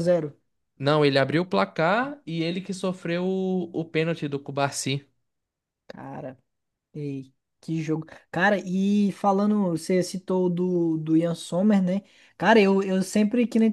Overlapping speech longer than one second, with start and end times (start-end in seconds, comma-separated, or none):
none